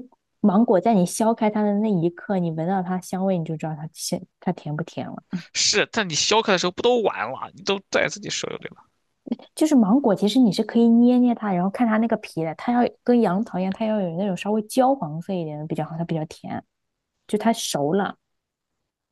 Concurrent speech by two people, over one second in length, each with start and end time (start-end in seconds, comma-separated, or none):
none